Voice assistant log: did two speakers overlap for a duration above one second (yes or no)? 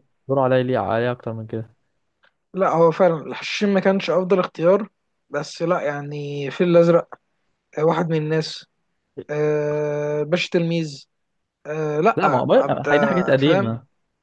yes